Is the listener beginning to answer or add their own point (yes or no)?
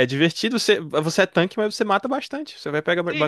yes